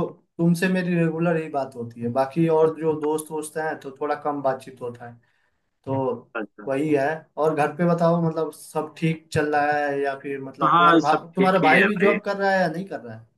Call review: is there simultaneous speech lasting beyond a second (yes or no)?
yes